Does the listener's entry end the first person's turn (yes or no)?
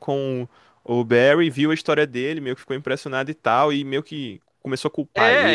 yes